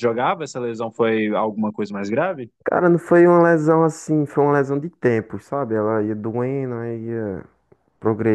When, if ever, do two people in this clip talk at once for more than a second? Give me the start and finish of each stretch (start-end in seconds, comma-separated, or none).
none